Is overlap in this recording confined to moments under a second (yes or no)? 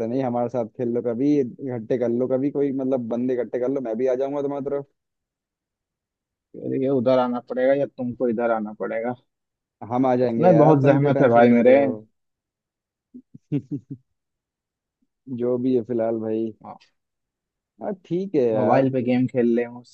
no